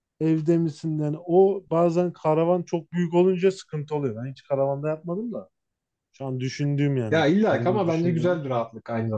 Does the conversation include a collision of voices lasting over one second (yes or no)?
yes